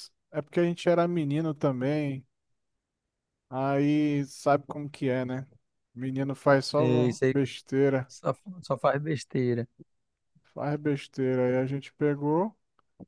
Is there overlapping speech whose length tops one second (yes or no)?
no